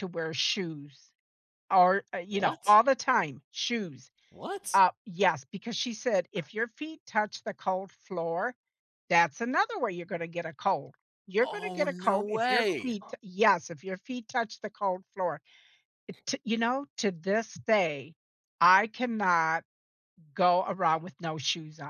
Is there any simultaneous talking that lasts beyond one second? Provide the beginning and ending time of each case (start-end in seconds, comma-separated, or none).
11.4-12.9